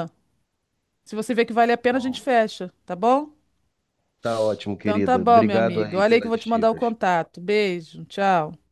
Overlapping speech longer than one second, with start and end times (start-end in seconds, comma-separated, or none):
4.8-6.8